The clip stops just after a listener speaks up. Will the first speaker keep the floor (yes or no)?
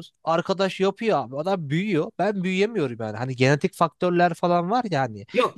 no